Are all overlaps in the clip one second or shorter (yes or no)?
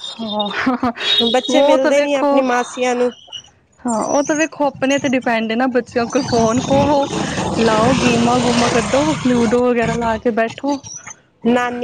no